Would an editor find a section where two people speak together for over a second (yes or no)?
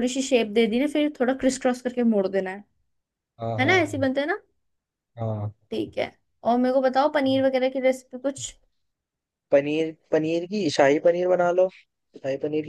no